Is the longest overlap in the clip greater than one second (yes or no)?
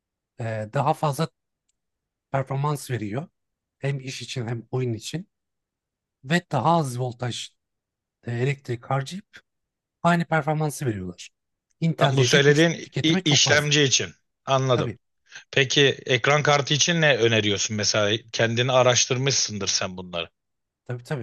yes